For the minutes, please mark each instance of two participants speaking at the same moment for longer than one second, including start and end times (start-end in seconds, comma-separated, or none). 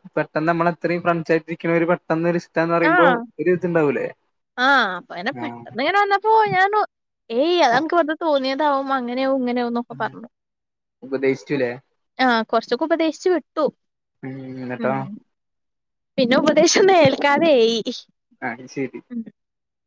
none